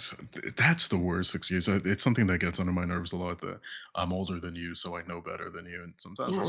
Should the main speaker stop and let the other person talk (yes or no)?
yes